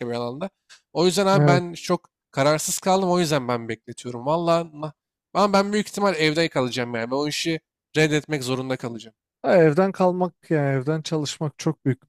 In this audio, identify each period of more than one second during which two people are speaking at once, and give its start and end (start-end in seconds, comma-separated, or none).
none